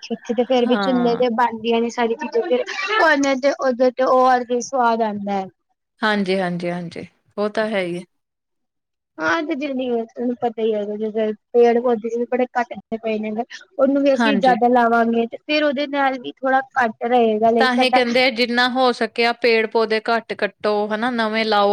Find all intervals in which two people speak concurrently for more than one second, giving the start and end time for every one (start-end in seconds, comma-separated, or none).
none